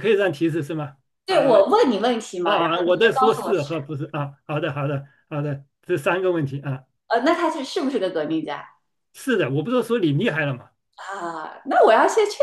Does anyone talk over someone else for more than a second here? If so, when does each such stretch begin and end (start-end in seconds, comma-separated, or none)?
2.4-3.7